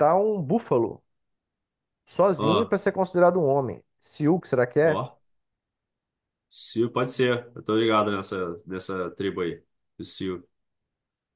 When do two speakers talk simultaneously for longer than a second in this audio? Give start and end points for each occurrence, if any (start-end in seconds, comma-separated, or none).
none